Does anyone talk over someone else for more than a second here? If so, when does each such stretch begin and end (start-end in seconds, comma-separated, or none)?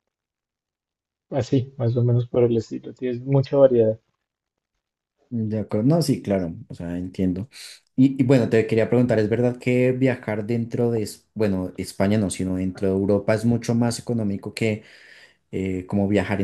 none